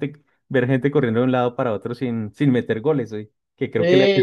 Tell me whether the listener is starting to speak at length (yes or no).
no